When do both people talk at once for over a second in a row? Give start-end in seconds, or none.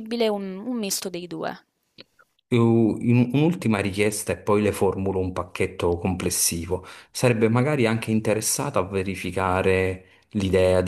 none